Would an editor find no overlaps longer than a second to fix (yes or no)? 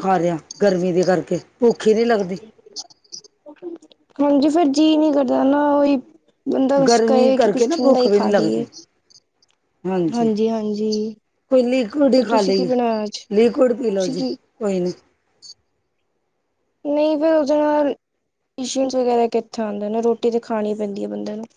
no